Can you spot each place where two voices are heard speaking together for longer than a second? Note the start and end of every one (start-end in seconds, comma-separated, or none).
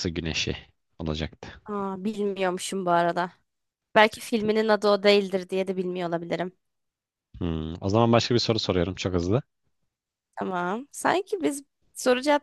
none